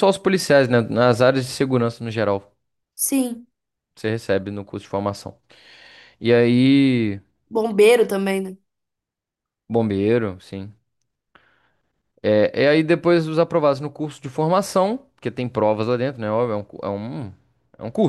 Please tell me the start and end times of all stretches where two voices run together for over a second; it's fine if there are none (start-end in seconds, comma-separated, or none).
none